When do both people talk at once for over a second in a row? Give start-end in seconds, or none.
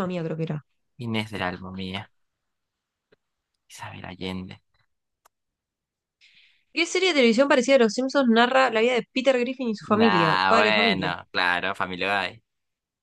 9.9-11.1